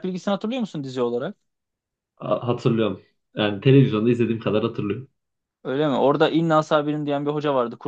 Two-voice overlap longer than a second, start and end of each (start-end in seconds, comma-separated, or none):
none